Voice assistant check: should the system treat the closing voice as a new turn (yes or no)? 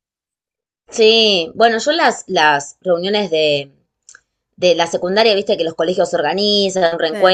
no